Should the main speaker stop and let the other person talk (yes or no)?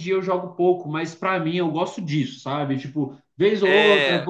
no